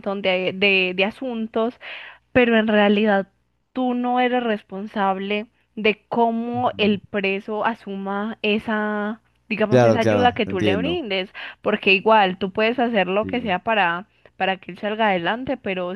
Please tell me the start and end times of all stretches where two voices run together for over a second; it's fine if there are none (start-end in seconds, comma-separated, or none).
9.7-11.1